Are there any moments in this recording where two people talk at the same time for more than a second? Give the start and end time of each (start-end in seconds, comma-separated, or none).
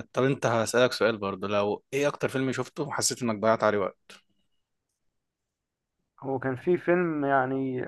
none